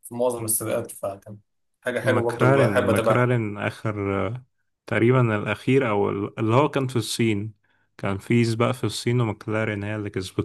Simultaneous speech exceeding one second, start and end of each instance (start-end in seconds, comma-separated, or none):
2.0-3.3